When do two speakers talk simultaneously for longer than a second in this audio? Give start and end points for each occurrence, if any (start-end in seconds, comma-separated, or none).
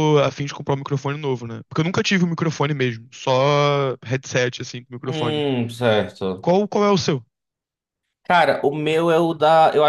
none